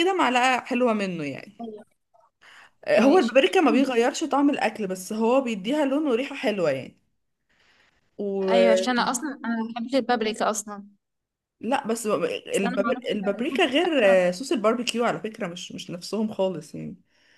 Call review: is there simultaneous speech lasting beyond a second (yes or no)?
yes